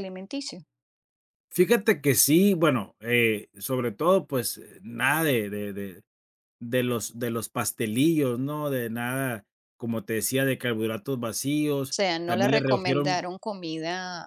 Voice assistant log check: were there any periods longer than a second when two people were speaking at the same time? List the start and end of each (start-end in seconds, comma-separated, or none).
11.8-13.3